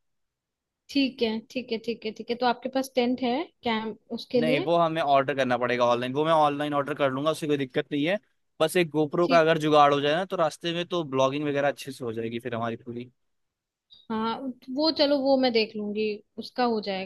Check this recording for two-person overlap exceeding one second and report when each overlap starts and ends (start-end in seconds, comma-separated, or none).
none